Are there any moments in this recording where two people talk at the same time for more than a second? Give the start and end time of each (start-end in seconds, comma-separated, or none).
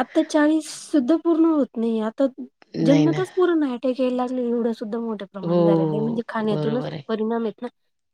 5.5-7.0